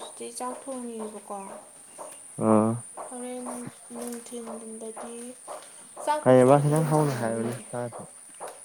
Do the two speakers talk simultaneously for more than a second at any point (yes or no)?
yes